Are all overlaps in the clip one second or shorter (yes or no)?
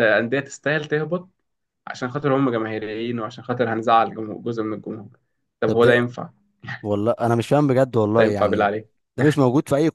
yes